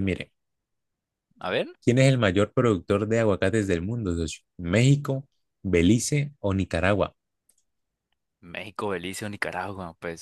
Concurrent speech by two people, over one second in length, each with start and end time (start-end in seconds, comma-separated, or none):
none